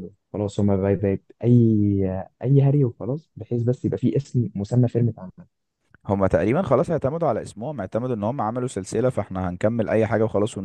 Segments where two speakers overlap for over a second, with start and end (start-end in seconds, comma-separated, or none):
none